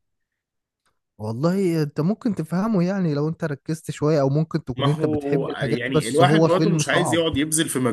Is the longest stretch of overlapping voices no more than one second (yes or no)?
no